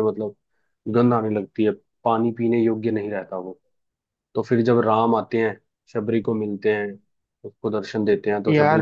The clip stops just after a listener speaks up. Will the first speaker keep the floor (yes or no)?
no